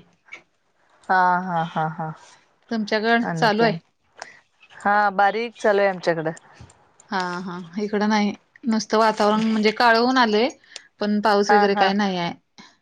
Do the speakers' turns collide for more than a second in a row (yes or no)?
no